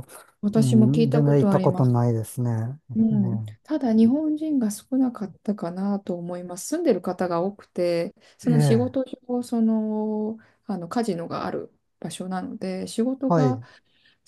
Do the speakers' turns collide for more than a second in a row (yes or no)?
yes